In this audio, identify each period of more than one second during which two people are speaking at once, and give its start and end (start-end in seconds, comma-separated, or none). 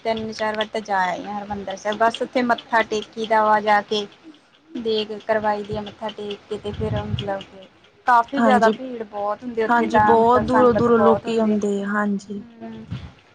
9.7-11.6